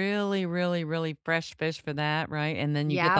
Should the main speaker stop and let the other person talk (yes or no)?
no